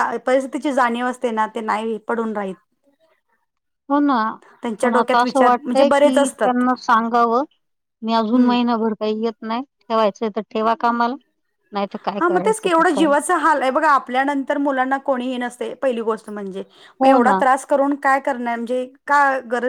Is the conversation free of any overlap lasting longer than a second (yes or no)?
no